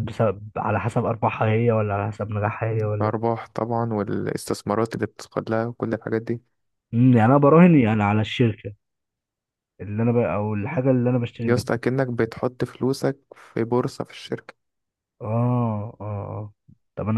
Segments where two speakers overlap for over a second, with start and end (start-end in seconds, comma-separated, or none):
none